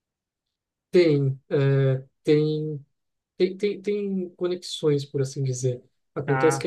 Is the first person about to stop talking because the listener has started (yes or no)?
no